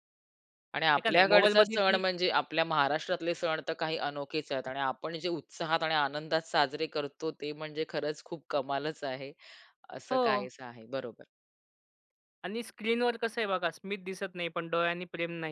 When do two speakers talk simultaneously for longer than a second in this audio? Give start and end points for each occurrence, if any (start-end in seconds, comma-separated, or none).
0.8-2.0